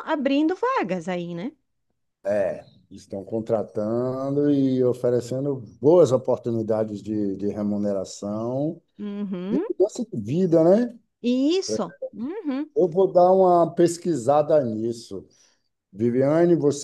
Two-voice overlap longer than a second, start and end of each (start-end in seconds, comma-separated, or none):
none